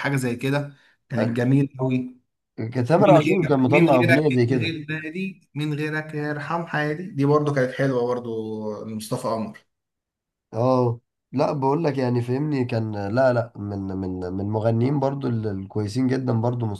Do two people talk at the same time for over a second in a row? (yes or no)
yes